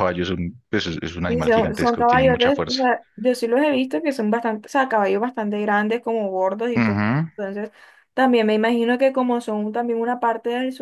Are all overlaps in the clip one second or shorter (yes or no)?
no